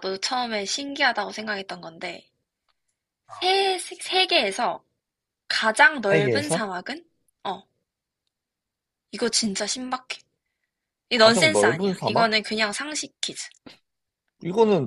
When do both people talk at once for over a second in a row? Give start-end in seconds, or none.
11.1-12.3